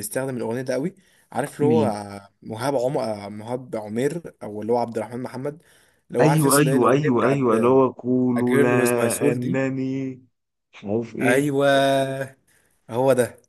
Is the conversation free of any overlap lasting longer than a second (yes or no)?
no